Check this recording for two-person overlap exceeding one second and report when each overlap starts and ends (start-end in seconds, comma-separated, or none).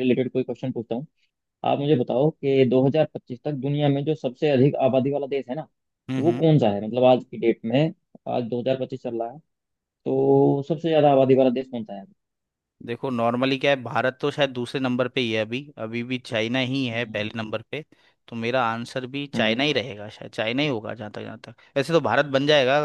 none